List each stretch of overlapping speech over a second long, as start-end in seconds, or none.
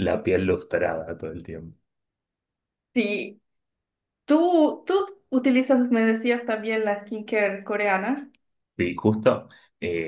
none